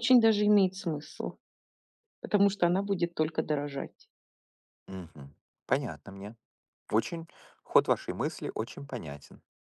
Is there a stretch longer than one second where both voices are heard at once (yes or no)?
no